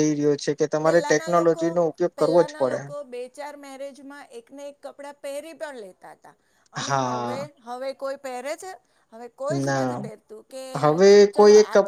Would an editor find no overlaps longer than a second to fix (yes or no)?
yes